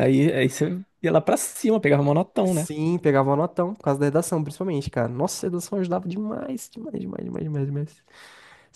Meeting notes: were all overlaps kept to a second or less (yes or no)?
yes